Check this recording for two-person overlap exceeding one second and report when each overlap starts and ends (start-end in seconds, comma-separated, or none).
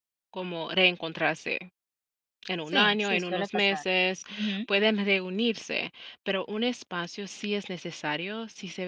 2.6-3.9